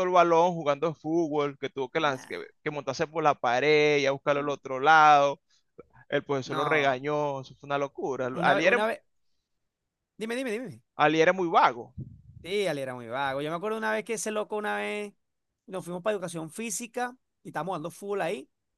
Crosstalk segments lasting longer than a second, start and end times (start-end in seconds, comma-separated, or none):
none